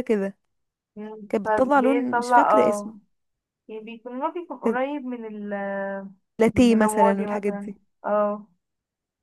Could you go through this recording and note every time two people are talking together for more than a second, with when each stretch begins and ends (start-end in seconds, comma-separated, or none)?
1.3-2.9, 6.5-7.8